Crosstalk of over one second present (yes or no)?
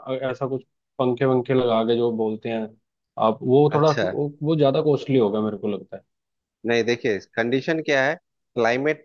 no